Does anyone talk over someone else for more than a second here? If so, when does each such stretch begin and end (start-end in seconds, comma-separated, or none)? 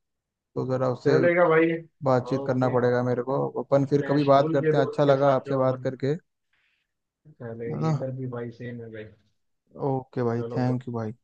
3.8-5.9